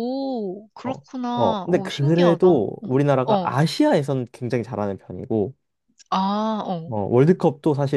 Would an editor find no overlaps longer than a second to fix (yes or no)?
no